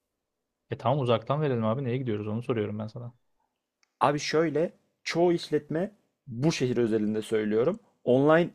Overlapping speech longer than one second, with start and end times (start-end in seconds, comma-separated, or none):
none